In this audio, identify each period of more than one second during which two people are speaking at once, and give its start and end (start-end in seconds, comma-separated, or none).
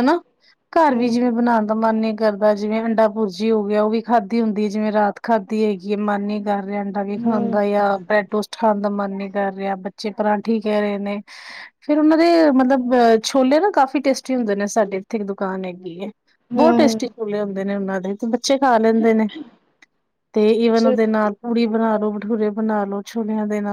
none